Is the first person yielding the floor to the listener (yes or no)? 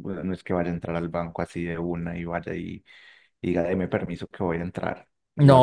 yes